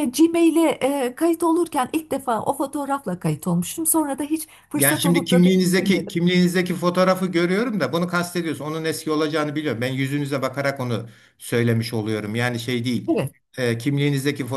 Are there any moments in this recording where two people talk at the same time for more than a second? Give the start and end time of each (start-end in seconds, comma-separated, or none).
4.8-6.2